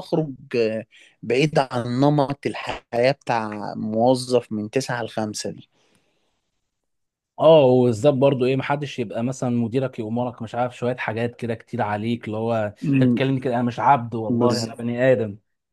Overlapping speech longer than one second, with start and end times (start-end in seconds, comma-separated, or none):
none